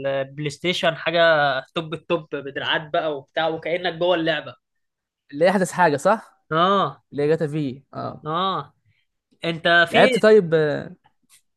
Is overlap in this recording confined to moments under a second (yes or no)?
yes